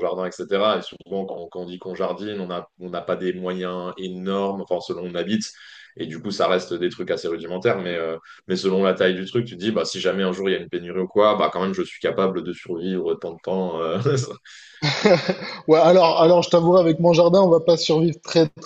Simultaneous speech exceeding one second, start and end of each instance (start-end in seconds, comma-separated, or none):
none